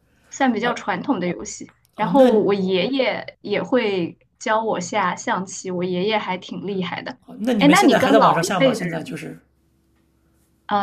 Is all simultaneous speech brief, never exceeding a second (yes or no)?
no